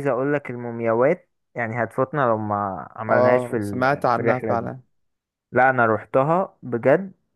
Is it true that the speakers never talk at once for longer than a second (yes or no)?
no